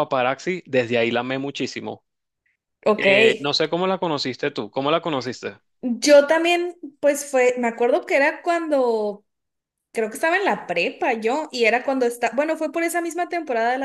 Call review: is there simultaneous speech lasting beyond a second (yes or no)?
no